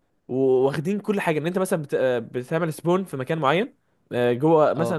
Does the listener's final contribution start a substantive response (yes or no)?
no